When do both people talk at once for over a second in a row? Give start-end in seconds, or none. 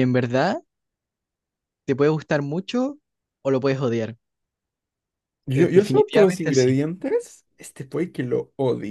5.5-6.8